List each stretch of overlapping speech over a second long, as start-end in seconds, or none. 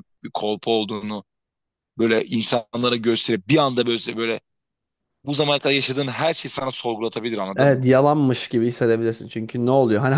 none